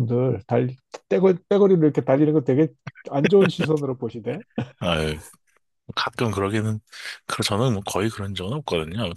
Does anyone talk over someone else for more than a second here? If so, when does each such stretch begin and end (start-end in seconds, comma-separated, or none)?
none